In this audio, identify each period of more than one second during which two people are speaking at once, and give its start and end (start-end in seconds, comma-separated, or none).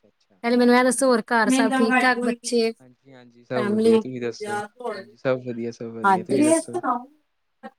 none